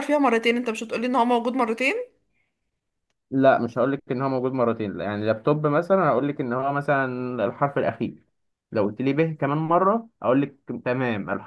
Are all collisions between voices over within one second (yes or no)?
yes